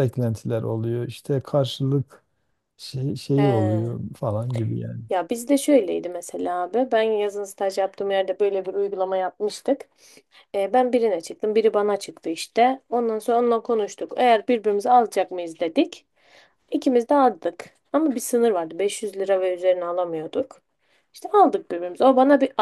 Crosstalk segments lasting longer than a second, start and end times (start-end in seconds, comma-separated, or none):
none